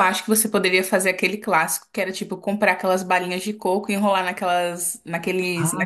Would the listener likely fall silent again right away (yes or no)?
no